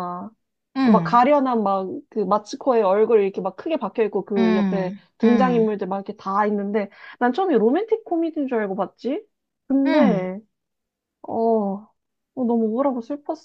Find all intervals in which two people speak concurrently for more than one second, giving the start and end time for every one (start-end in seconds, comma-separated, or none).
4.4-5.7